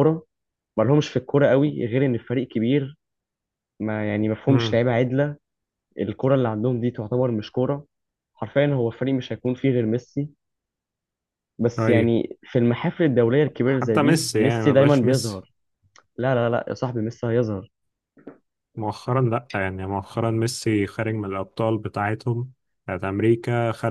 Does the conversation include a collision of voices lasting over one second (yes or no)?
yes